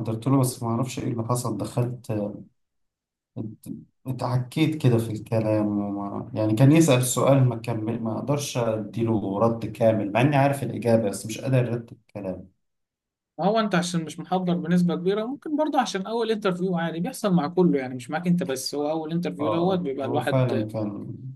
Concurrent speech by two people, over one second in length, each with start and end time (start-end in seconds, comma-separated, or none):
19.4-20.7